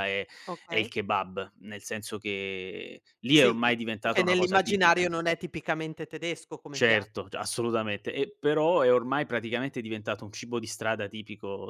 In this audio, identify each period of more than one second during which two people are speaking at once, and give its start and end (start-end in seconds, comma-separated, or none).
3.3-5.0